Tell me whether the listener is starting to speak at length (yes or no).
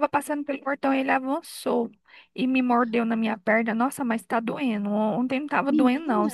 no